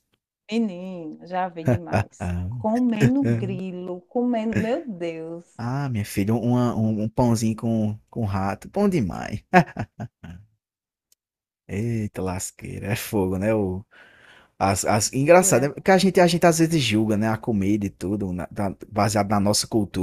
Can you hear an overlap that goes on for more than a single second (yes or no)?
no